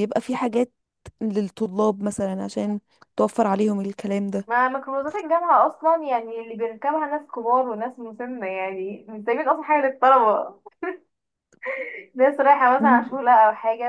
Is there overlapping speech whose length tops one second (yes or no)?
no